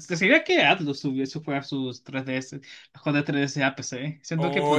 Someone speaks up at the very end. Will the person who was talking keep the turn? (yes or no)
no